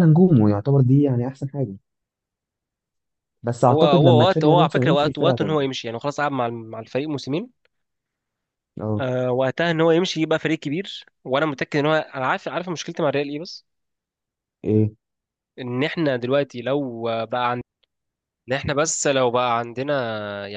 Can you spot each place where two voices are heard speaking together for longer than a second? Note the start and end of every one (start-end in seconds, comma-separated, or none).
3.7-5.7